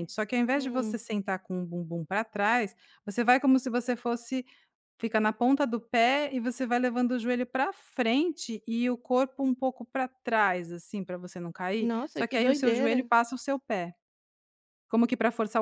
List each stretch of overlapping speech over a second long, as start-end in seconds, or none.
11.8-13.1